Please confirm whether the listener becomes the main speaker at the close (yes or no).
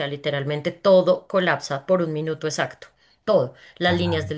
no